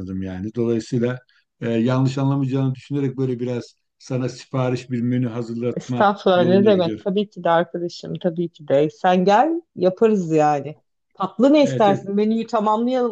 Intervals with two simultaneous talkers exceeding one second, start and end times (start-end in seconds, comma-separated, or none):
5.8-7.1